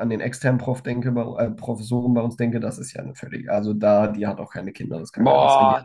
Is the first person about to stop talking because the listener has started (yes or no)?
yes